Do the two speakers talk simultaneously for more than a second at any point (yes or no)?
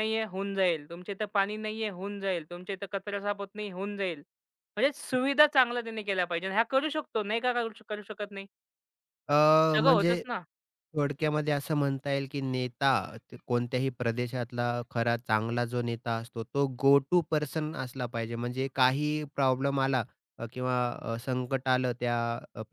no